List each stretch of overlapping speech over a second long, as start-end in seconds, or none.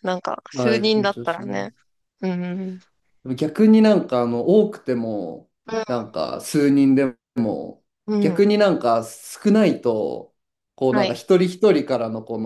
0.5-1.7